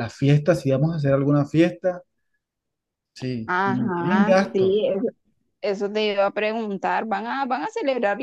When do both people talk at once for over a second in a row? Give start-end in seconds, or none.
3.5-4.8